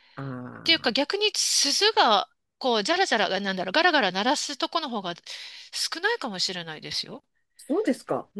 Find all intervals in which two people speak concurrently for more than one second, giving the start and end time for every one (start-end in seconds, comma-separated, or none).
none